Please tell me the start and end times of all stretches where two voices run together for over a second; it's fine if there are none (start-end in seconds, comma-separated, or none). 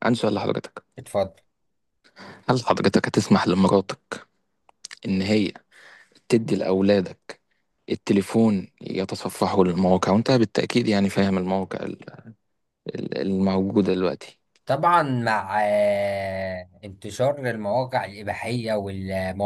none